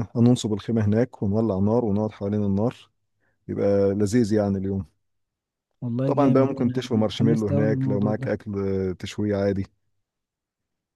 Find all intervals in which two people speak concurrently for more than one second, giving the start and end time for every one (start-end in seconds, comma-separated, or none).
6.0-8.3